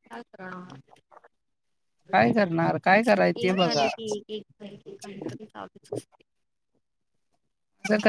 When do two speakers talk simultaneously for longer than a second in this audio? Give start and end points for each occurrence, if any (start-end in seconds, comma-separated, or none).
2.1-3.9